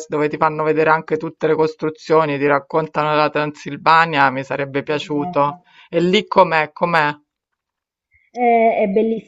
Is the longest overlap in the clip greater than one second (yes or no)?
no